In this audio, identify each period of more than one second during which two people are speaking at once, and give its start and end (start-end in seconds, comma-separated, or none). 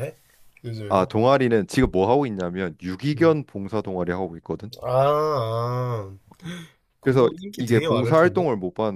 7.0-8.4